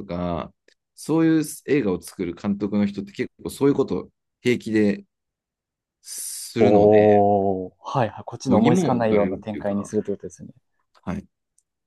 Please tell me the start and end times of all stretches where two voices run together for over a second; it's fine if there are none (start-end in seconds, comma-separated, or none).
8.5-9.9